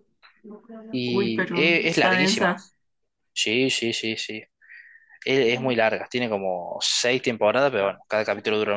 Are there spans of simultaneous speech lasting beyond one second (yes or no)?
yes